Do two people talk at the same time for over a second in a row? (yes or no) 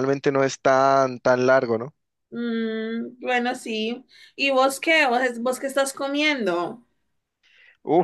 no